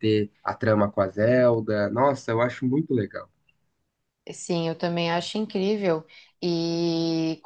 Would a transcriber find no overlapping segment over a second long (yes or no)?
yes